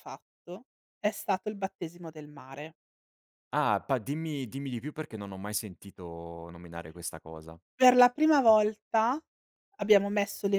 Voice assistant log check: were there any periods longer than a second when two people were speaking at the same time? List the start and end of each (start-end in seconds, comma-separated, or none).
none